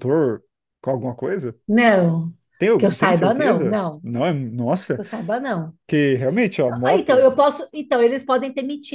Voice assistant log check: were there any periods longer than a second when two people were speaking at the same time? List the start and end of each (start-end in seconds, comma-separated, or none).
2.8-4.0